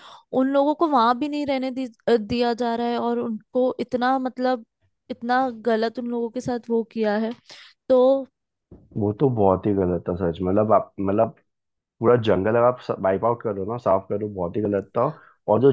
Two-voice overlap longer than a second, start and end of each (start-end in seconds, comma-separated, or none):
none